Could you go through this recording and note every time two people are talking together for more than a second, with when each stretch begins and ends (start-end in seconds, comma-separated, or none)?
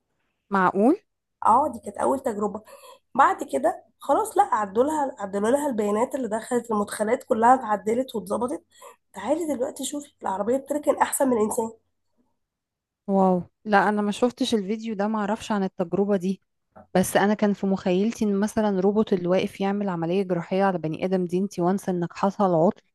none